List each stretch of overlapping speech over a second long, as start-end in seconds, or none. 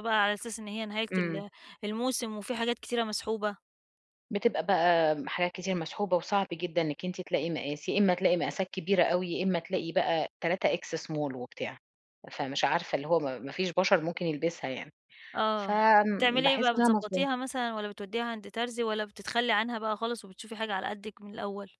15.6-17.3